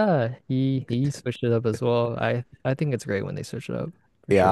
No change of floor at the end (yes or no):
no